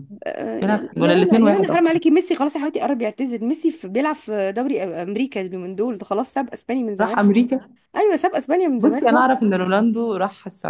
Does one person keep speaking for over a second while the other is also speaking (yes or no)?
yes